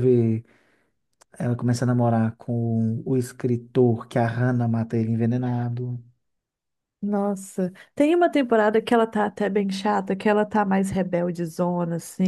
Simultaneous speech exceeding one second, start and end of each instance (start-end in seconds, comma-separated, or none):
none